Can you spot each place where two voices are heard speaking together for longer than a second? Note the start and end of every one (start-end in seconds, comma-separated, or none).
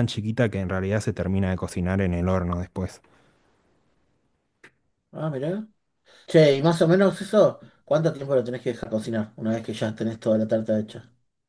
none